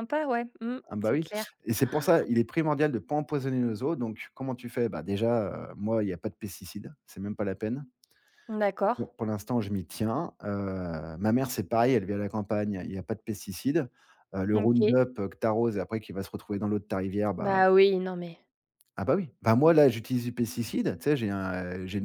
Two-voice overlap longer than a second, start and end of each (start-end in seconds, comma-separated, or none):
none